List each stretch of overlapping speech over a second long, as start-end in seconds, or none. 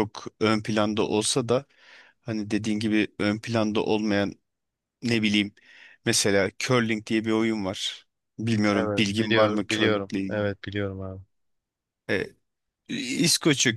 8.7-10.5